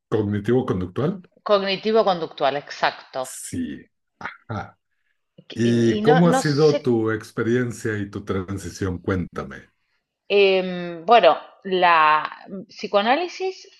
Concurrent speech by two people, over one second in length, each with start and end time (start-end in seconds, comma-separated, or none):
5.5-7.0